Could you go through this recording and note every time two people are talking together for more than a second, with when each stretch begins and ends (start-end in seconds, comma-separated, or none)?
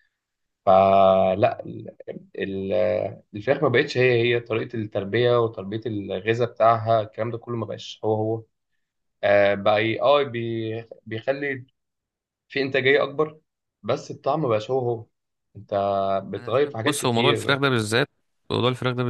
16.4-17.6